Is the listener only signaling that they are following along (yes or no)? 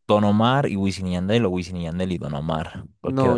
no